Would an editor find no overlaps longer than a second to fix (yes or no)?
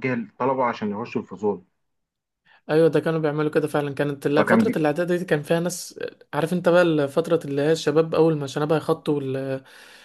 yes